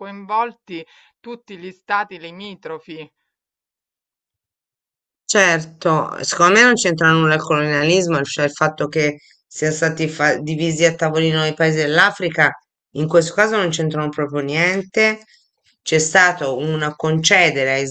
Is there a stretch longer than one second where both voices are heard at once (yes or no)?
no